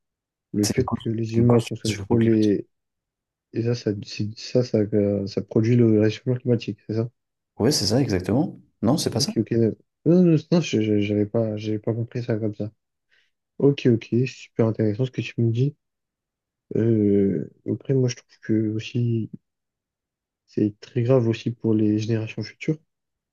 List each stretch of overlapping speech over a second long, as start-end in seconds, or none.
0.6-2.5